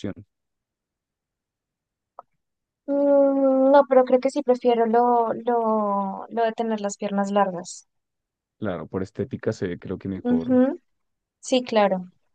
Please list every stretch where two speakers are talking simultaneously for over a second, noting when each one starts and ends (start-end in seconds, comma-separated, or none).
none